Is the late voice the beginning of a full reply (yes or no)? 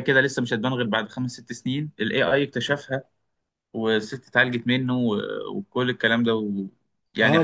yes